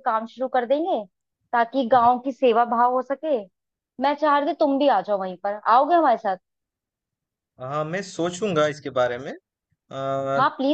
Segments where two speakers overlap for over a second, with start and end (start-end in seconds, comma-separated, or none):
none